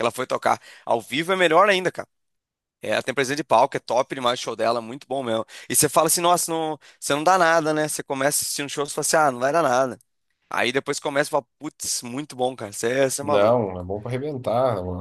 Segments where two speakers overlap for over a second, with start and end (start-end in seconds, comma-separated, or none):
none